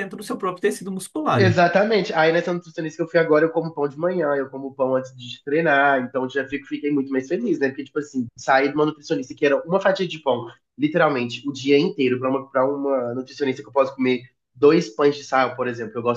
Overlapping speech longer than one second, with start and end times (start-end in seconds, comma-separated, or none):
none